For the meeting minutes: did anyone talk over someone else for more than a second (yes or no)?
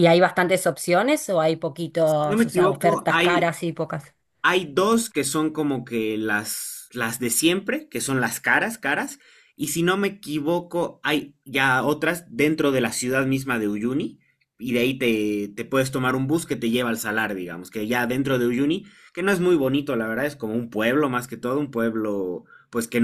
yes